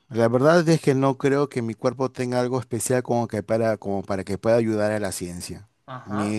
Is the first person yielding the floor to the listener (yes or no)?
no